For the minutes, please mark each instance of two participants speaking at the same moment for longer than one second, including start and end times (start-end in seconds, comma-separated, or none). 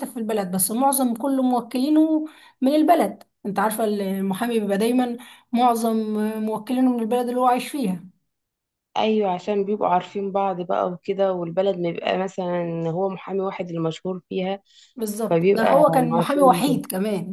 15.3-16.8